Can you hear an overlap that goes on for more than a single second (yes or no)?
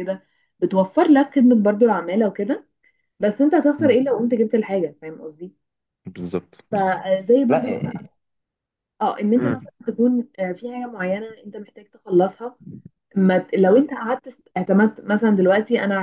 yes